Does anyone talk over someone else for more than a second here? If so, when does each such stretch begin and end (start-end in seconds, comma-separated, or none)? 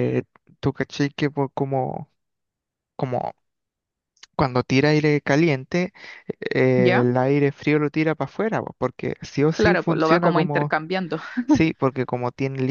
9.5-10.7